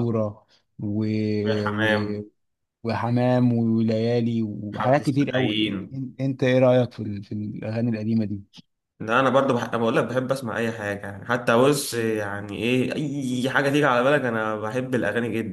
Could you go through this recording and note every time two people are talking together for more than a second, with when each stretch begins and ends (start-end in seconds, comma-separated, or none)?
4.7-6.0